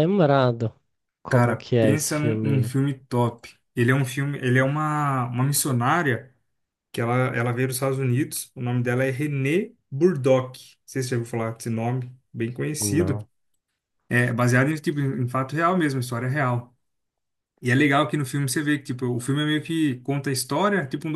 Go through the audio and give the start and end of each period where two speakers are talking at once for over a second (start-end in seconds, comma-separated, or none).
1.3-2.7